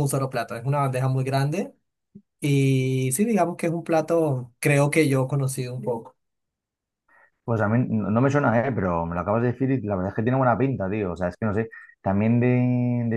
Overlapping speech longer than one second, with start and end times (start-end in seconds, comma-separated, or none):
none